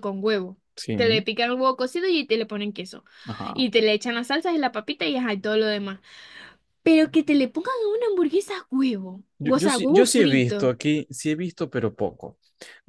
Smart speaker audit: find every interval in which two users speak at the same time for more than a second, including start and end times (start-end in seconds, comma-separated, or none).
9.4-10.7